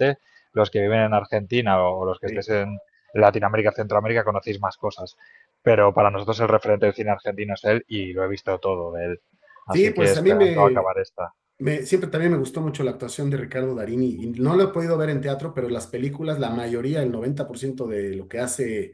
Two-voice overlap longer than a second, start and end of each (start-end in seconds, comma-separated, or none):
9.7-10.9